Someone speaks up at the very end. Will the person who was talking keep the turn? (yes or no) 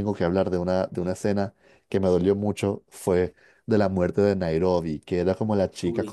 yes